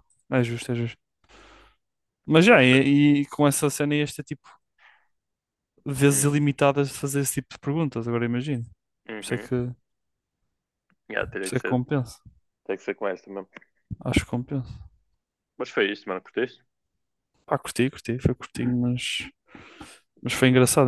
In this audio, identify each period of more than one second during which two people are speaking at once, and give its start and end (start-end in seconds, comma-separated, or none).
none